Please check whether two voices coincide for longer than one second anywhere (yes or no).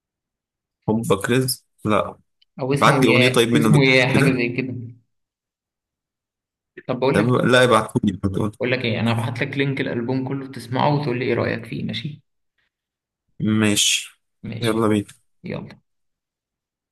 yes